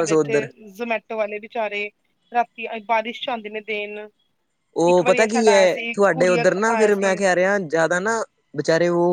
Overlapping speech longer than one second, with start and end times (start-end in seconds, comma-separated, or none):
4.9-7.2